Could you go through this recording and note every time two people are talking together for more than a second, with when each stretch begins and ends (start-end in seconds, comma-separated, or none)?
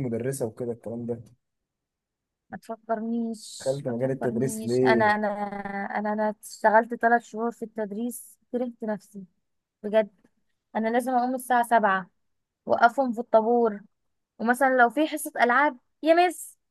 3.6-5.1